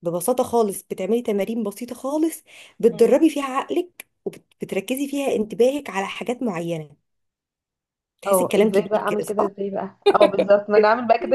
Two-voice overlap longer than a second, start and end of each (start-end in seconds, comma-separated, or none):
8.3-9.5